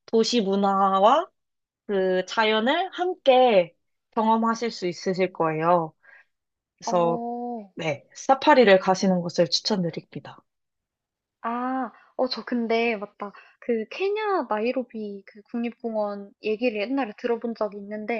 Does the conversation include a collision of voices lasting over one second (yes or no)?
no